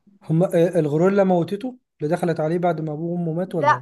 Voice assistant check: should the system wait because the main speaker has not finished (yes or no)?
no